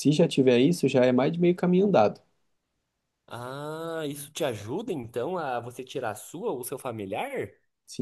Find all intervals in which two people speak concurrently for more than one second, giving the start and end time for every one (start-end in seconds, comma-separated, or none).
none